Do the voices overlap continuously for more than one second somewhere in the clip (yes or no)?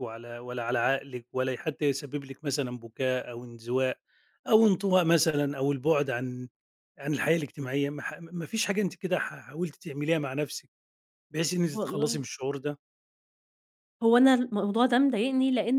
no